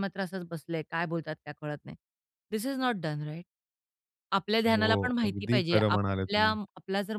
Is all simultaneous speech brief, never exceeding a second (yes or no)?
no